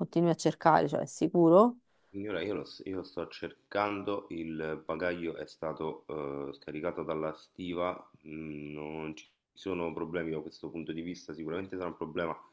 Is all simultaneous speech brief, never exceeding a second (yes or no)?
yes